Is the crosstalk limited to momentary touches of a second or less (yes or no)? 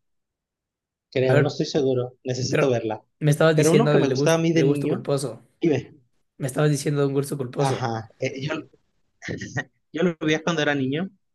no